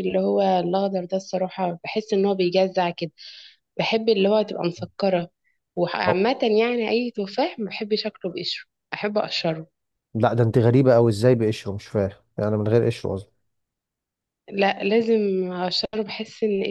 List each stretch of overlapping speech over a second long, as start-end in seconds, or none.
none